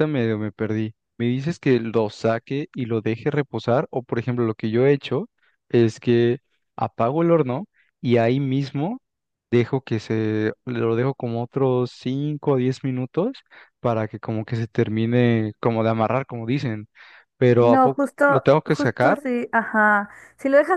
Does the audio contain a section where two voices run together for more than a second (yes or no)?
yes